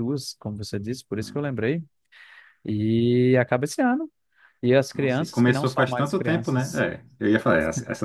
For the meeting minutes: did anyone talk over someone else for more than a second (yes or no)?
yes